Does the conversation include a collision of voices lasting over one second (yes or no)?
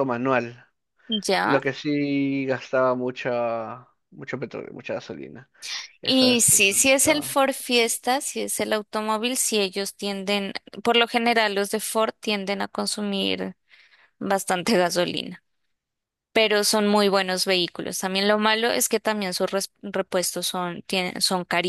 yes